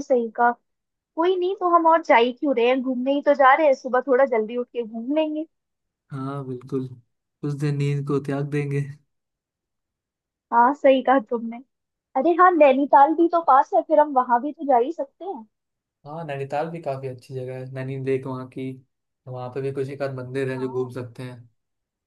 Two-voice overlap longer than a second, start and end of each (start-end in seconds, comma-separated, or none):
none